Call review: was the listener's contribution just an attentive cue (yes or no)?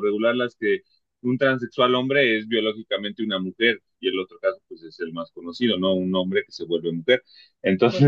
no